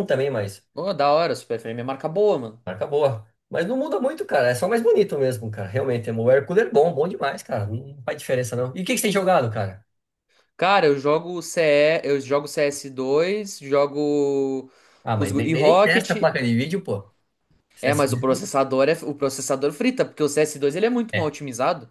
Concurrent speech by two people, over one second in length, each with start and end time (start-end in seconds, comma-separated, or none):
15.1-16.4